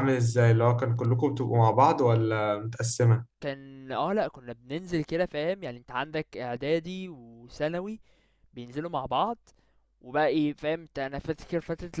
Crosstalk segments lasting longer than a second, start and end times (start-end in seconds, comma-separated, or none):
none